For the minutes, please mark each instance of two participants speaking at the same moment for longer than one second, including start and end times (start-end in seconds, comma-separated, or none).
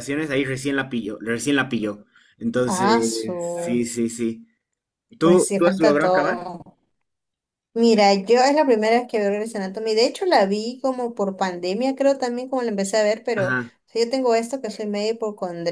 5.2-6.5